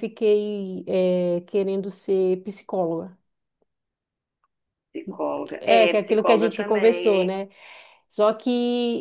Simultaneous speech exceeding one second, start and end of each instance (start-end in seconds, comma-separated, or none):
5.6-7.5